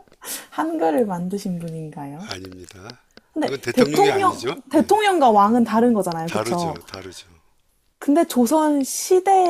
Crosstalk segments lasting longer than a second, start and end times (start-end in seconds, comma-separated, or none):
3.4-4.9